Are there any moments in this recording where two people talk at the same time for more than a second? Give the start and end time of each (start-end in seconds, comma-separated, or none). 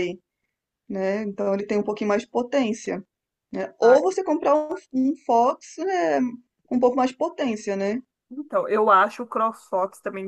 none